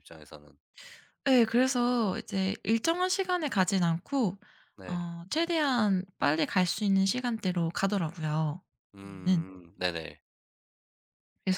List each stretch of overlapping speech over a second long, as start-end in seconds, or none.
none